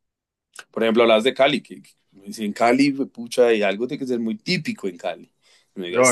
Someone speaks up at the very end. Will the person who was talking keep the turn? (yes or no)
no